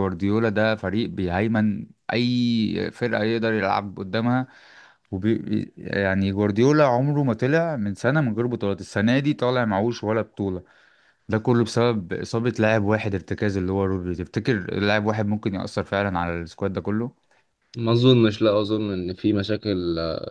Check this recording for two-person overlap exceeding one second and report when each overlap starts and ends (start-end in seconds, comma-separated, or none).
none